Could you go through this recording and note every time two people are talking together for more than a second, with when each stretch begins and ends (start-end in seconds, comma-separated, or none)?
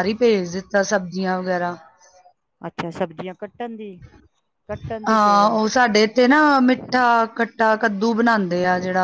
none